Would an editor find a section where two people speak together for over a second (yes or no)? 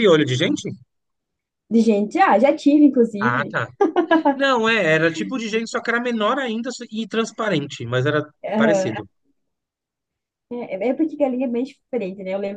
no